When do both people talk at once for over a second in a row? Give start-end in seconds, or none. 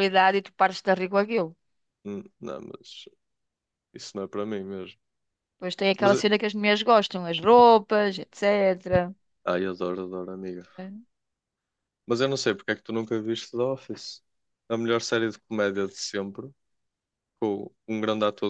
none